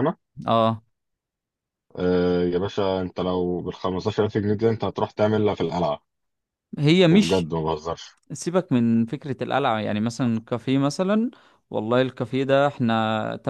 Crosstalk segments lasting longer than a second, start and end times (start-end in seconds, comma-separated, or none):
none